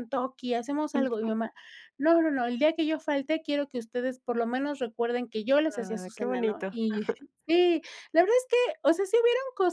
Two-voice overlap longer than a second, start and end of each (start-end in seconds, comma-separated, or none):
5.7-7.0